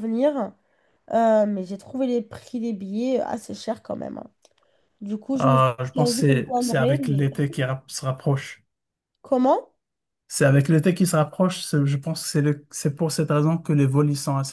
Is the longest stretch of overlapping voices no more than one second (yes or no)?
no